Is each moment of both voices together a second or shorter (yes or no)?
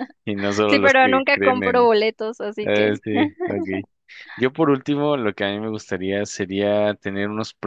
no